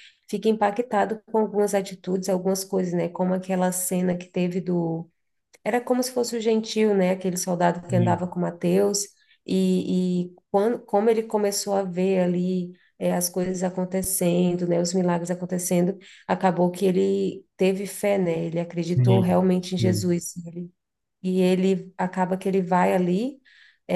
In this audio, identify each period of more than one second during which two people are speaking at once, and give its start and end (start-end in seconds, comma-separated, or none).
18.8-20.0